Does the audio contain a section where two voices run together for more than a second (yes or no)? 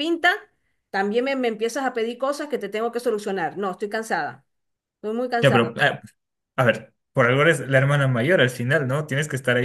no